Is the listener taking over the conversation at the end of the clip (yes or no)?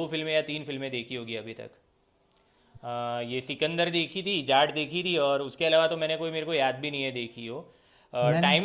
no